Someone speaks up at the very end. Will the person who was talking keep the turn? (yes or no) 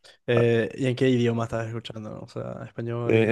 no